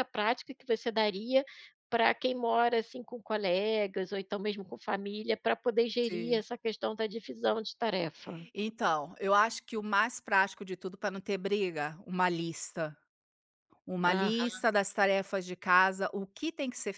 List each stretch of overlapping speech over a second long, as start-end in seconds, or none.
none